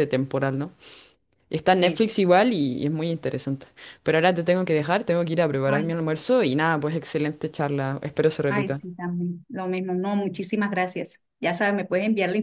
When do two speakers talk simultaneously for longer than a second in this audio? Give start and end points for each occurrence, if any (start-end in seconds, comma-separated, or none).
none